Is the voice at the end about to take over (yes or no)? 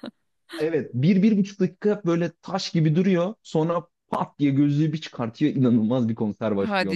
yes